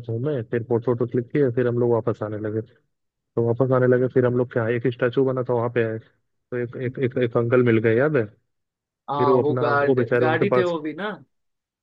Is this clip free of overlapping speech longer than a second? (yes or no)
no